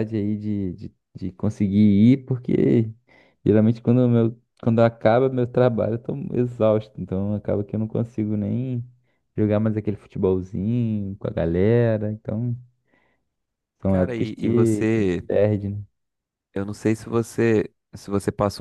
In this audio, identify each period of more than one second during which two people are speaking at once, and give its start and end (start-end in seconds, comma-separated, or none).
13.9-15.2